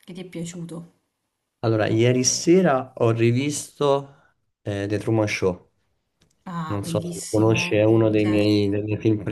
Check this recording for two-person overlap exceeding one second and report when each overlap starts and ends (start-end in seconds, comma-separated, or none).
6.7-8.6